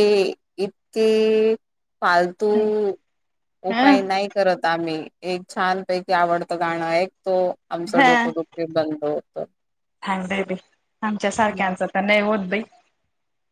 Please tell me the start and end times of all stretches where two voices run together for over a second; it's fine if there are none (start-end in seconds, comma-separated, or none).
none